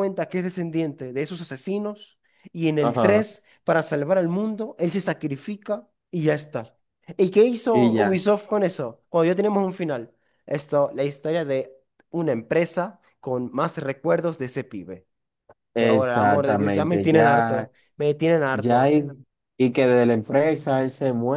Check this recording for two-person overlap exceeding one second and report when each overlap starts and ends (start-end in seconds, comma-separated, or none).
15.8-17.7